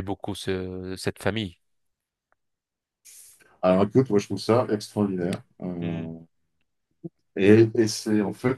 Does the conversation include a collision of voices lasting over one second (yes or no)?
no